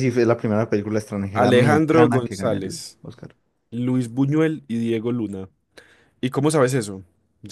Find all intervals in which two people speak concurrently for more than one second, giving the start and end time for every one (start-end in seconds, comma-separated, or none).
1.3-3.0